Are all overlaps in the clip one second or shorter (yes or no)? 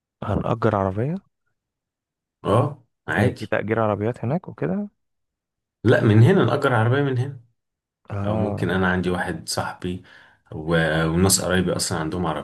yes